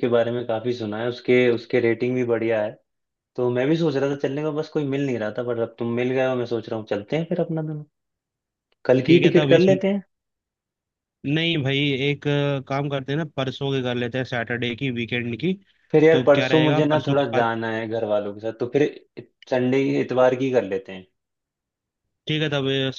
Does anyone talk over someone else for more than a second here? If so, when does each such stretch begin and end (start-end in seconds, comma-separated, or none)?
16.1-17.5